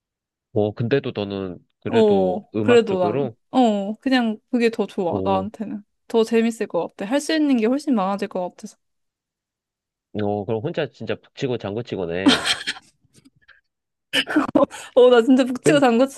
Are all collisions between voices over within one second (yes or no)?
no